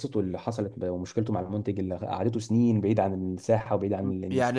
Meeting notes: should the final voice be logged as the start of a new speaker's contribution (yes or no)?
yes